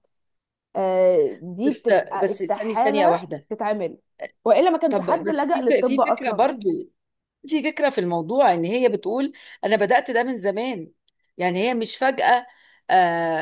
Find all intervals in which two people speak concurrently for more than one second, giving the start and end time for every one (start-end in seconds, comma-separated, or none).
1.7-3.5, 4.9-6.5